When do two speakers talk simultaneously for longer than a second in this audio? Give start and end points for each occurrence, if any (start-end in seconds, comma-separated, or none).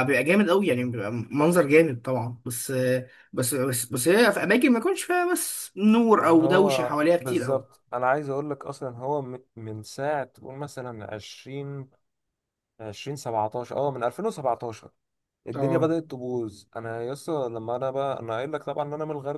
6.2-7.6